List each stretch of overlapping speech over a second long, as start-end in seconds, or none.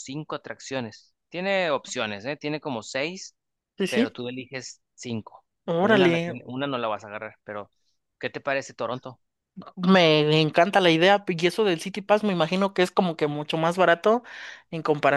none